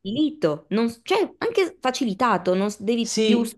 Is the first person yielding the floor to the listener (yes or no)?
yes